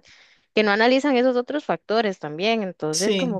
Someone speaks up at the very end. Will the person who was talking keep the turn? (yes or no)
yes